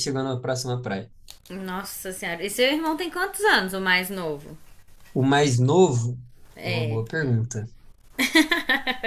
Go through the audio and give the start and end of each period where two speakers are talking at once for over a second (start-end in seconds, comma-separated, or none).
none